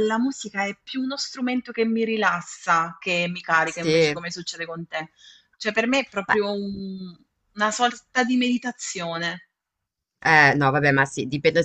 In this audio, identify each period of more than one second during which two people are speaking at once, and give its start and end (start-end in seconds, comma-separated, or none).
none